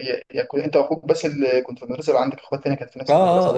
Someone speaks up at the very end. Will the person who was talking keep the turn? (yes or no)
no